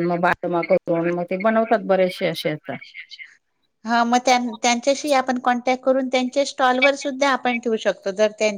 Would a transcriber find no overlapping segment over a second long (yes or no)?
yes